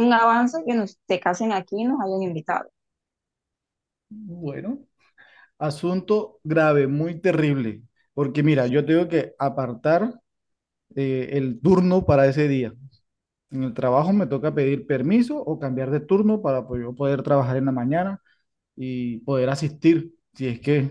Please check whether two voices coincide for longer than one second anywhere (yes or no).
no